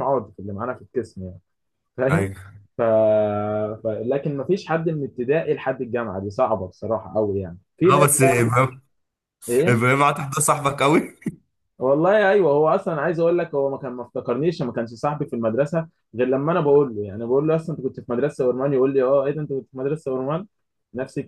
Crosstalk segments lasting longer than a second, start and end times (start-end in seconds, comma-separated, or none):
none